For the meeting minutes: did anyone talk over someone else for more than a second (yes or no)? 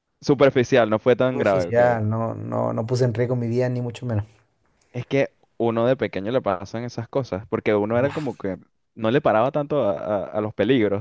no